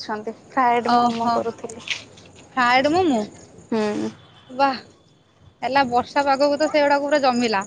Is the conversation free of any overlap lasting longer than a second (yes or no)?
yes